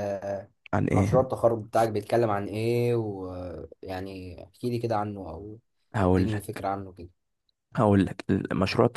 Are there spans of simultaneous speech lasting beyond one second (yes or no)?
no